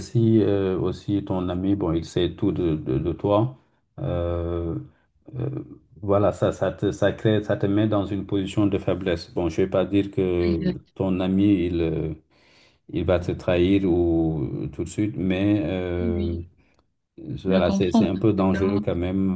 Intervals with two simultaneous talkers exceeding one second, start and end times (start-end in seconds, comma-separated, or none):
17.5-18.8